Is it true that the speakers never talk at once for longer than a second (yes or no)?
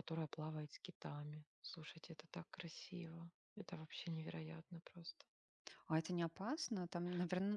yes